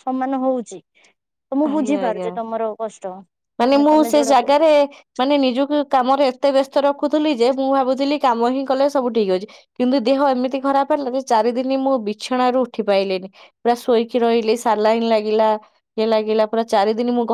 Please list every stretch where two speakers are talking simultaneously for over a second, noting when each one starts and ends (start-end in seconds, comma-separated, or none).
none